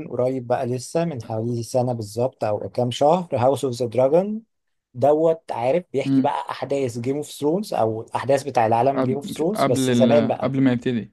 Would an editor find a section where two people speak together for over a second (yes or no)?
yes